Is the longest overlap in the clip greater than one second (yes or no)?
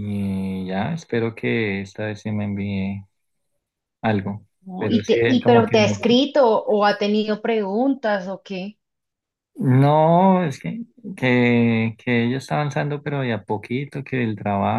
yes